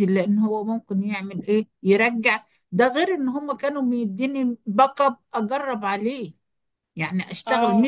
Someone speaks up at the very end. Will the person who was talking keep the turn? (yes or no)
yes